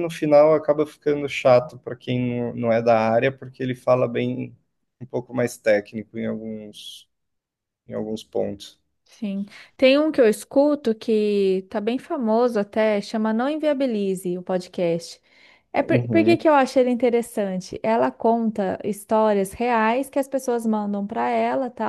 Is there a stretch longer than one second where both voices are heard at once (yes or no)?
no